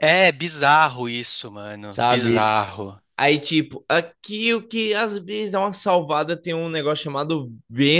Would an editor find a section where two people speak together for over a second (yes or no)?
no